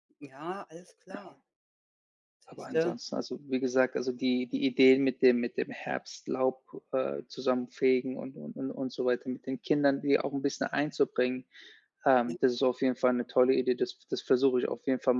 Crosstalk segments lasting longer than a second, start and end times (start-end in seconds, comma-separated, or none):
none